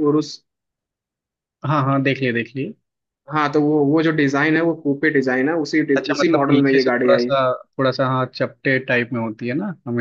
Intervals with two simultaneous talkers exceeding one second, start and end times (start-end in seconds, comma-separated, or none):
6.0-7.3